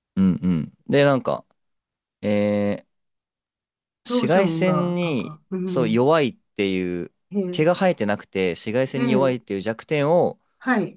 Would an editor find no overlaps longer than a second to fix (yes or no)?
no